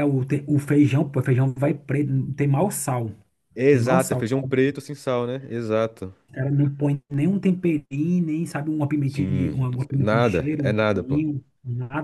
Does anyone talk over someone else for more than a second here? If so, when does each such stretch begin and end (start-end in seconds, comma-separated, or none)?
9.1-11.2